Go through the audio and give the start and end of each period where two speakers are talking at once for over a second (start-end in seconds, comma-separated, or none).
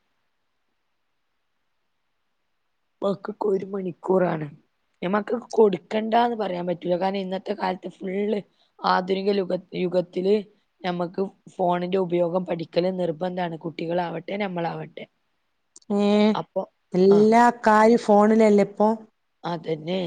none